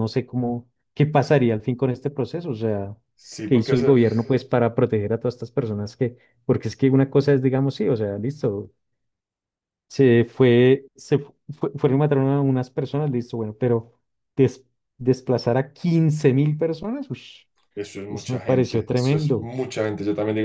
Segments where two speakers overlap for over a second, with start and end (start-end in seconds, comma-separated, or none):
18.1-19.5